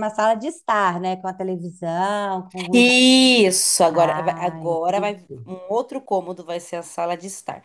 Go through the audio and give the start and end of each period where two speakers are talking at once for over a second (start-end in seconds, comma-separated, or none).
3.9-5.5